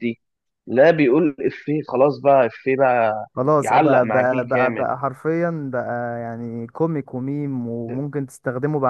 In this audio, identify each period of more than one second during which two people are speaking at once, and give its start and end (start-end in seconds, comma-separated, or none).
3.3-4.9